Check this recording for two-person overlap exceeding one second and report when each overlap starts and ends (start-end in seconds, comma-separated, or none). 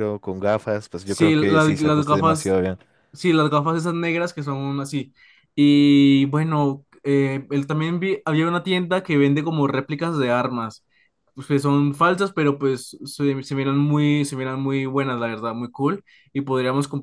1.0-2.6